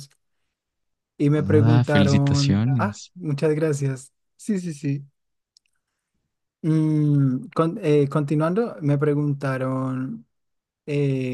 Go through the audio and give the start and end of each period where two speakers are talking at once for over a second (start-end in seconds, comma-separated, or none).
1.3-3.1